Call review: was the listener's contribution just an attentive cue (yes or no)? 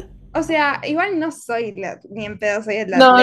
no